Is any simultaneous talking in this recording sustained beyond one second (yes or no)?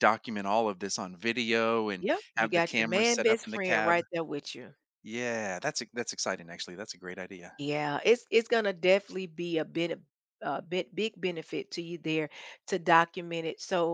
yes